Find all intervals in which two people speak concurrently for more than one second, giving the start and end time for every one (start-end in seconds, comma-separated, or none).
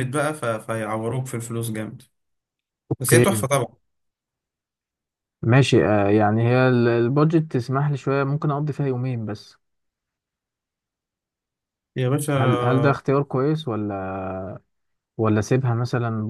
none